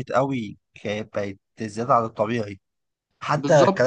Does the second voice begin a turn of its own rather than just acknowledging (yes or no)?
no